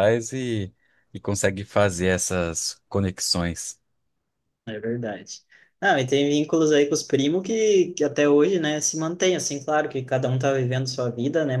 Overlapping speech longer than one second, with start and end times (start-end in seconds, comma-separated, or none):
none